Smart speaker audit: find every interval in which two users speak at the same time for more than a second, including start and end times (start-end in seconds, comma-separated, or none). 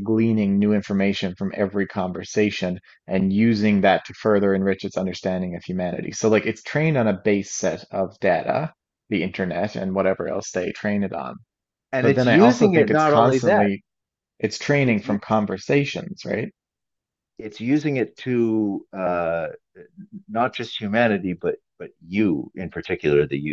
12.0-13.7